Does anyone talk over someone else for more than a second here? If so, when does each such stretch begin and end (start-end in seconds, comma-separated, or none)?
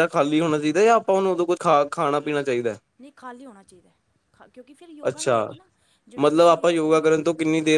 none